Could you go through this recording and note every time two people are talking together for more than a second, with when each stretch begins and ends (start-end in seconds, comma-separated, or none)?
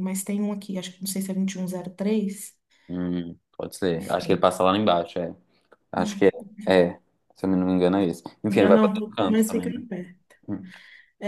8.5-9.8